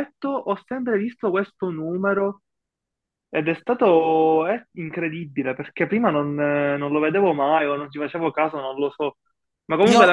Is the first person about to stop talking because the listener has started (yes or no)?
no